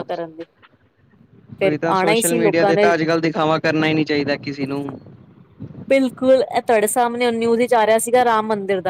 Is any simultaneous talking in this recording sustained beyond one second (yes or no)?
yes